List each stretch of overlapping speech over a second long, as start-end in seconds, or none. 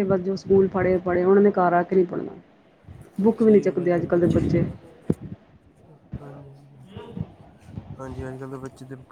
none